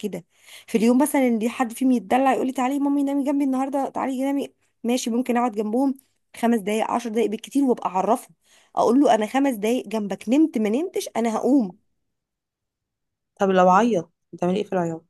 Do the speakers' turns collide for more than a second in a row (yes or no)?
no